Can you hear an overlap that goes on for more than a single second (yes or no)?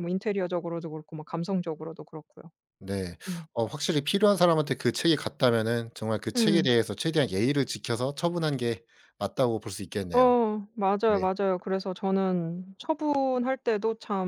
no